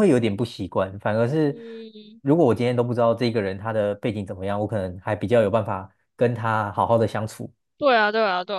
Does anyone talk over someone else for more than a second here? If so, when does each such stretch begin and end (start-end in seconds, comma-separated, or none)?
none